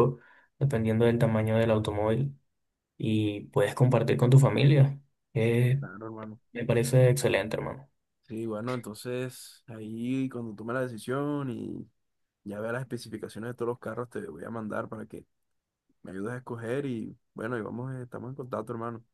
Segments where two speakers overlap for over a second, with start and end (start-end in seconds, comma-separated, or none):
none